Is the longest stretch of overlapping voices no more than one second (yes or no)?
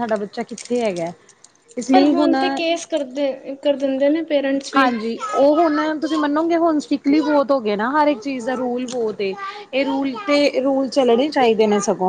yes